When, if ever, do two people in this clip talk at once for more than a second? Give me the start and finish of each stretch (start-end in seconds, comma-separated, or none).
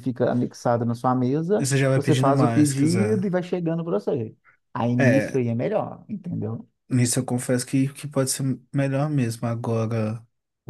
1.6-3.2